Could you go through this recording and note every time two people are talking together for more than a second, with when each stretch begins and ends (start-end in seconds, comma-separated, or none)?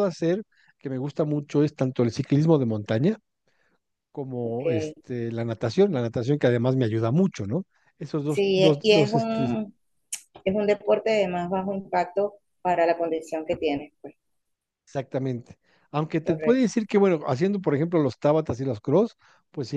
8.3-9.5